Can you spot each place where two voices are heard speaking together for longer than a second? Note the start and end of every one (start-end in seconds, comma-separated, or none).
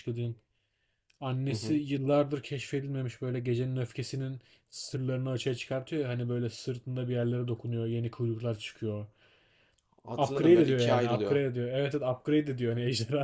10.2-11.4